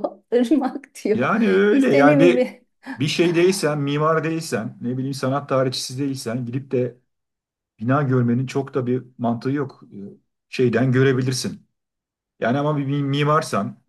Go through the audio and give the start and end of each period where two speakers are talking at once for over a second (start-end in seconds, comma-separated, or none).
1.1-2.5